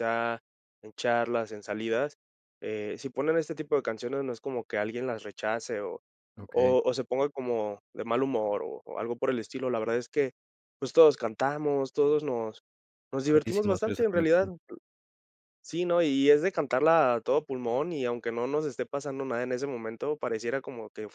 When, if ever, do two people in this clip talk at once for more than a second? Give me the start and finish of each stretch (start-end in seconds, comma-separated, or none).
13.3-14.5